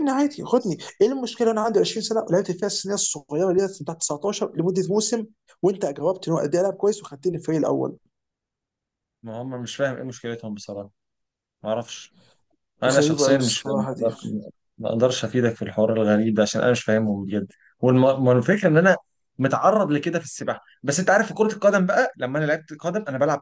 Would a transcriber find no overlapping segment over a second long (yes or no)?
no